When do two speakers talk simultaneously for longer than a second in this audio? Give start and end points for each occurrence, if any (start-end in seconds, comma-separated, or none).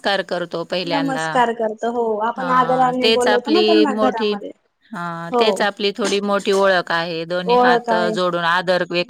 2.4-4.3